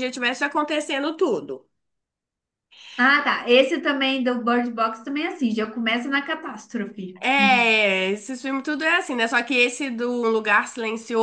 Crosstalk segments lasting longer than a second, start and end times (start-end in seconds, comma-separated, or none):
none